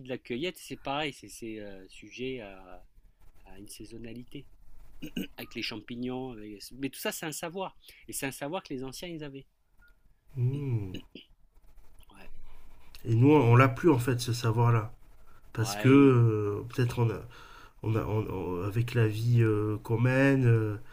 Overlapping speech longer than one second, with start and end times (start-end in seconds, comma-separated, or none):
none